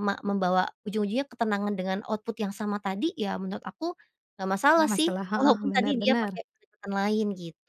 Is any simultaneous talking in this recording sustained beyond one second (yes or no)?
yes